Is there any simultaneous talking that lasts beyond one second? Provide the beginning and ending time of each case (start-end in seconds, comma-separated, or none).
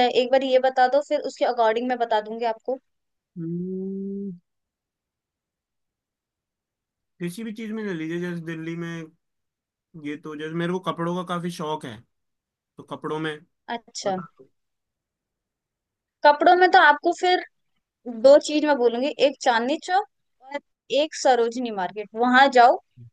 none